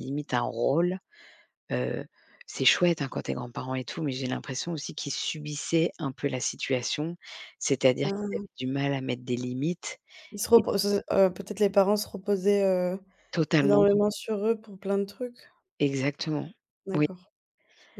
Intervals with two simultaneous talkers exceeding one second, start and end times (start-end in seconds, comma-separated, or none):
none